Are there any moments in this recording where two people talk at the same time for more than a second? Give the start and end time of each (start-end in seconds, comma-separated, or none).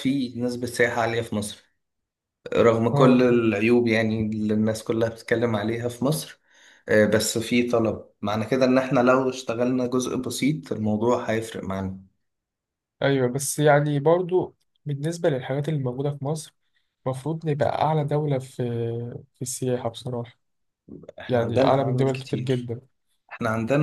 21.3-22.7